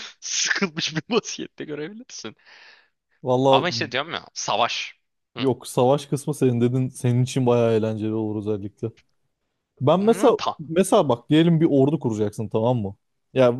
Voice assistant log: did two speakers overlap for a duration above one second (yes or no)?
no